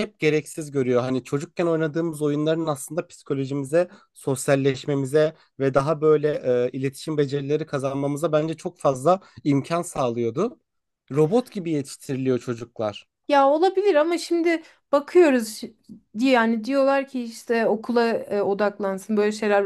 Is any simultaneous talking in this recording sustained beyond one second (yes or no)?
no